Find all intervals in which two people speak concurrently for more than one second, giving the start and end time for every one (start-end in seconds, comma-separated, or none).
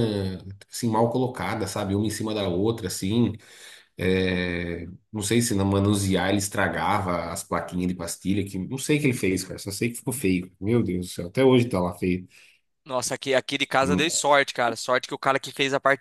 none